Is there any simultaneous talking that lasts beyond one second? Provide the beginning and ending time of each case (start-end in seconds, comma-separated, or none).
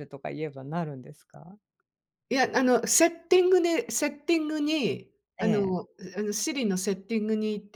none